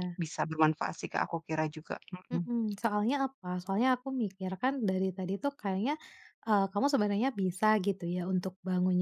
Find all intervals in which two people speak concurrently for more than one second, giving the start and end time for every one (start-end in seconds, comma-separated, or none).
none